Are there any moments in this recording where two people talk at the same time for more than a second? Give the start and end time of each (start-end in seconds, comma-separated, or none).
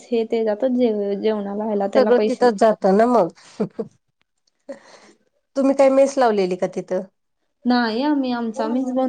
none